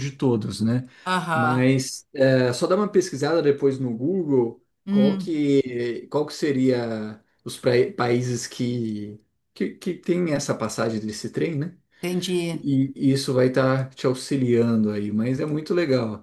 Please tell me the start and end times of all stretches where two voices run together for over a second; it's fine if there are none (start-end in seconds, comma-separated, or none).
none